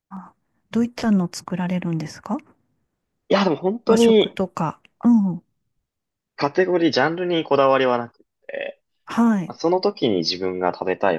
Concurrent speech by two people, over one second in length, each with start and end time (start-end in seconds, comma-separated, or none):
none